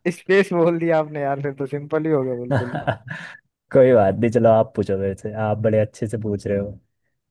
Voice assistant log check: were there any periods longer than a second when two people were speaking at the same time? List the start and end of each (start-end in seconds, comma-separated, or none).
none